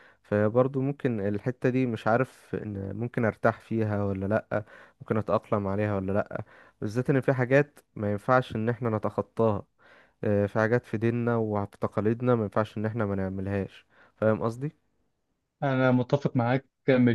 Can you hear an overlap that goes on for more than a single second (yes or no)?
no